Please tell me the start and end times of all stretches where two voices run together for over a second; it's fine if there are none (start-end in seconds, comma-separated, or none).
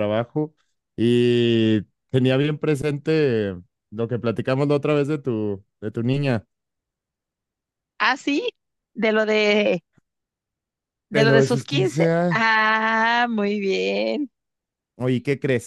11.1-12.5